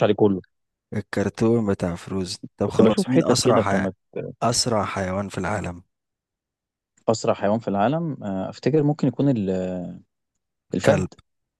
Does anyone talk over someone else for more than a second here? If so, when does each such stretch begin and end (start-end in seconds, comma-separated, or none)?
2.7-3.9